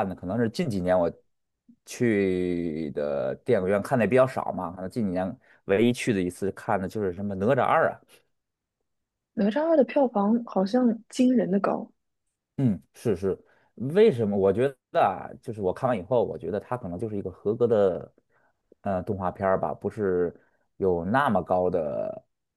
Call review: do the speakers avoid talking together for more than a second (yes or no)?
yes